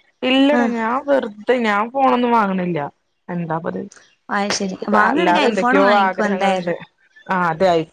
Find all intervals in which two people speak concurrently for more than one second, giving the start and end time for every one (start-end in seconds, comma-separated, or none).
4.6-6.7